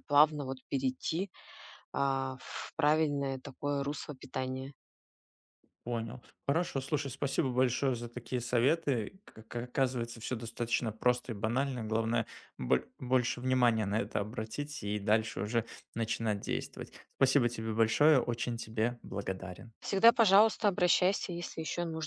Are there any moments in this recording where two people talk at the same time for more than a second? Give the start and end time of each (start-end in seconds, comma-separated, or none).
none